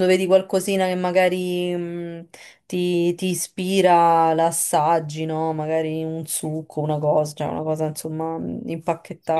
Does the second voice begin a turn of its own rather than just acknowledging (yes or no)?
yes